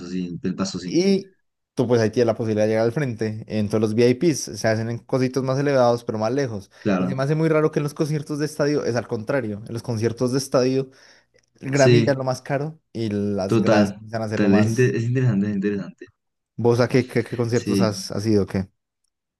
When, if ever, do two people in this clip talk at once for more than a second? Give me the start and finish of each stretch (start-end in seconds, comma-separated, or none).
13.4-15.0